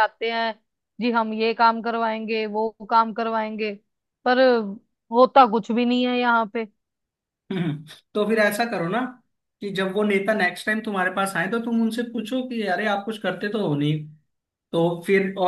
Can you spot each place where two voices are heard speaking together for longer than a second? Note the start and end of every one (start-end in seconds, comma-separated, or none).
none